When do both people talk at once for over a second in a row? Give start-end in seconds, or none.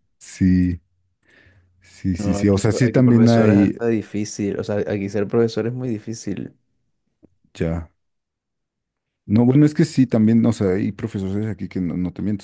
2.1-3.8